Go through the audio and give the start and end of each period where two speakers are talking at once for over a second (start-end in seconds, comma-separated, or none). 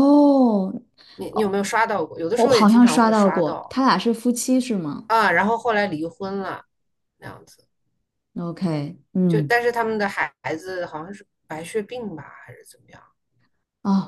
2.4-3.8